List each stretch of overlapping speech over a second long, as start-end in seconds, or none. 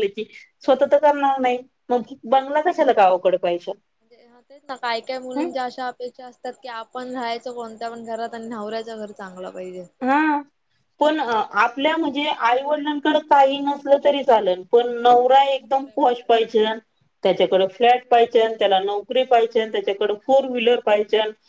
none